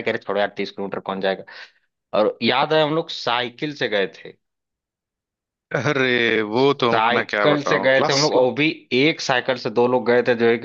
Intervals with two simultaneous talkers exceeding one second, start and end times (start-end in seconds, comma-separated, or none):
6.9-8.3